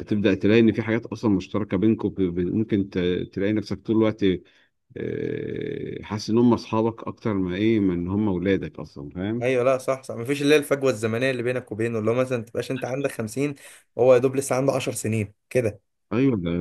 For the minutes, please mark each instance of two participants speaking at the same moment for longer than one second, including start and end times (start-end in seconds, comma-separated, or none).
none